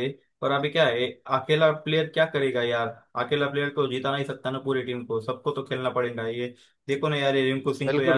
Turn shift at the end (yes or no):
no